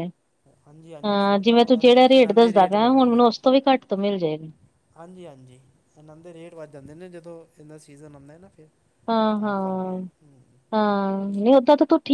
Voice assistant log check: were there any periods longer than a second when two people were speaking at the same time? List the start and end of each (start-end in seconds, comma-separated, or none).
1.0-2.5